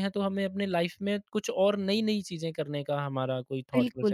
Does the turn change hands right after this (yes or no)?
no